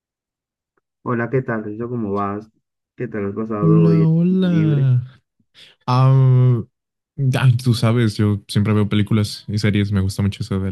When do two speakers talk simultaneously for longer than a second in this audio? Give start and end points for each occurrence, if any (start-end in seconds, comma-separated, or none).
3.6-4.9